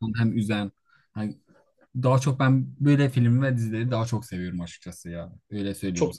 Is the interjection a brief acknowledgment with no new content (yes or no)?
no